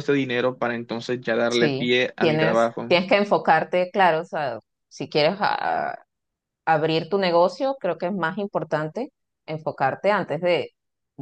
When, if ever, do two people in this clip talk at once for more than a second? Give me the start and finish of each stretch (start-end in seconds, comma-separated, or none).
1.5-2.9